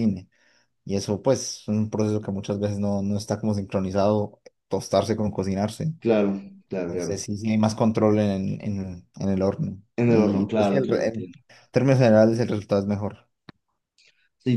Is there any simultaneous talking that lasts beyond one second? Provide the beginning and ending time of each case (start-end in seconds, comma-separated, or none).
10.0-11.3